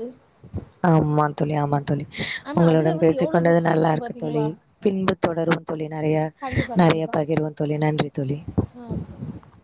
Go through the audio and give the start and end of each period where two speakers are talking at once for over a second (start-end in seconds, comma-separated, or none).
2.6-4.4